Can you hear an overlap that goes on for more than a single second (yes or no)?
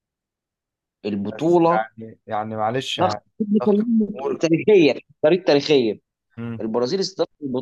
no